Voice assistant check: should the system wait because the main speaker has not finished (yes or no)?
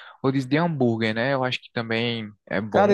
no